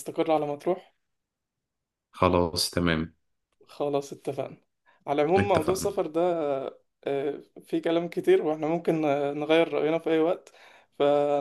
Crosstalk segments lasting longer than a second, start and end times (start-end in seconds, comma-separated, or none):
none